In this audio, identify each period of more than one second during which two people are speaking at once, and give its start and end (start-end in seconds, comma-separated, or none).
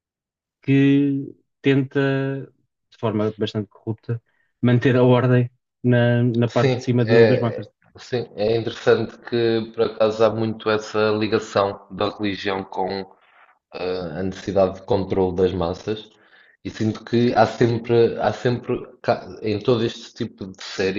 6.5-7.7